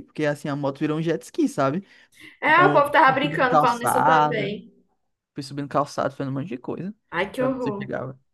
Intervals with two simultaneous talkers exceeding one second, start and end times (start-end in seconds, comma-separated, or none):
2.5-4.5